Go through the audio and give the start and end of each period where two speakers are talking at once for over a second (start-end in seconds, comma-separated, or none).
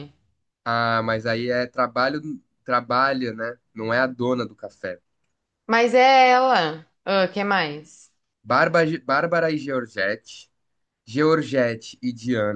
none